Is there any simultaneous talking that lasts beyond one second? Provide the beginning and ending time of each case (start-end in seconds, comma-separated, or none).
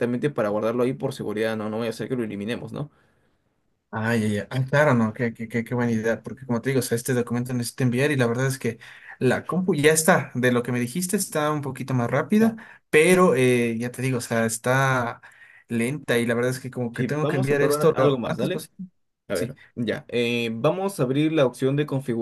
16.9-18.6